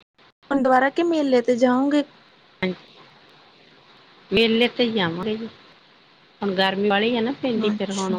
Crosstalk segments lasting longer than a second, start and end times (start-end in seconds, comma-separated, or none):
none